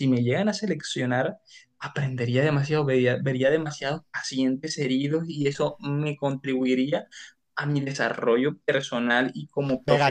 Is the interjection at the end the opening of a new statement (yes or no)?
yes